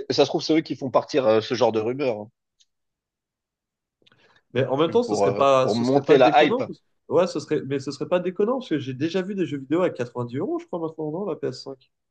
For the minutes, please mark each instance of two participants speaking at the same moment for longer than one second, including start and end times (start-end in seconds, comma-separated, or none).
4.6-6.6